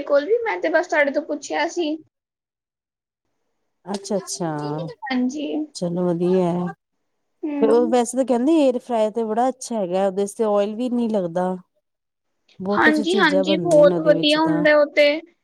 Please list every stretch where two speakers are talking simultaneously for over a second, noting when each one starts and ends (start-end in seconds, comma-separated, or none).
12.8-14.6